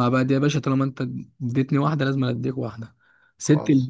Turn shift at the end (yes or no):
no